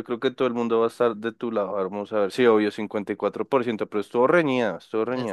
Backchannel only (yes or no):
no